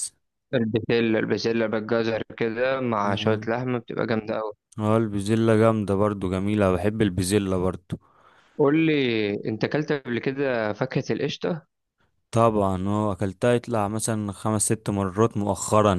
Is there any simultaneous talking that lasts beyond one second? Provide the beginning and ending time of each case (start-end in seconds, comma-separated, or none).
none